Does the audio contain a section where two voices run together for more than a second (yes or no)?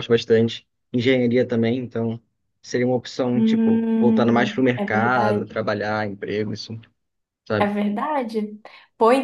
yes